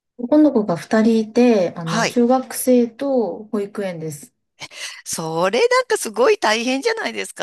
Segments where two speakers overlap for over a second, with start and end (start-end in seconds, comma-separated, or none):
none